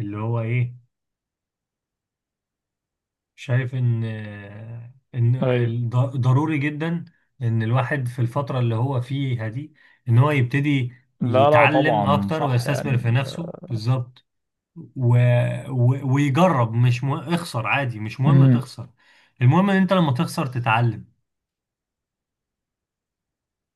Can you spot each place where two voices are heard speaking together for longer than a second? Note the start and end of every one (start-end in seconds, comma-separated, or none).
11.2-13.3